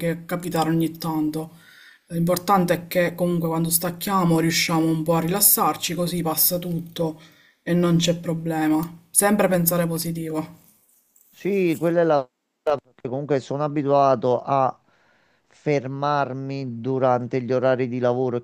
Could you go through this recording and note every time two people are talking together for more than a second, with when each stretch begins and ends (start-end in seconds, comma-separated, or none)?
none